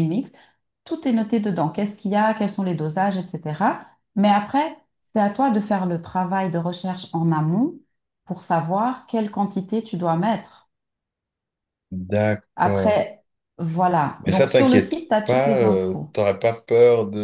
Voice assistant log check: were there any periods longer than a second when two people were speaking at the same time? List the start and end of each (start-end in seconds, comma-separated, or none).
14.2-16.1